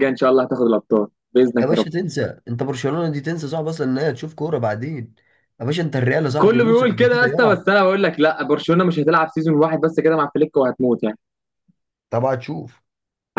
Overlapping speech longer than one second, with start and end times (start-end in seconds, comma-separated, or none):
6.4-7.6